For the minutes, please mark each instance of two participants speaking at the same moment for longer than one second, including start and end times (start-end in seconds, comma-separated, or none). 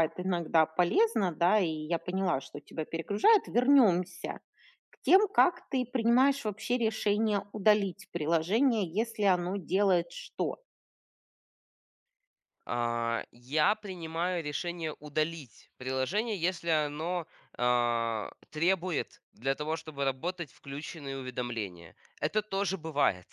none